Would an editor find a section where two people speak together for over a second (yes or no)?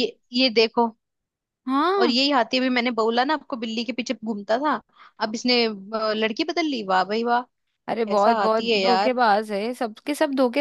yes